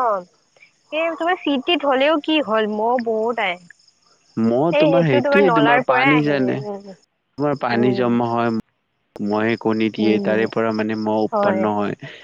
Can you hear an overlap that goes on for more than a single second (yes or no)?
yes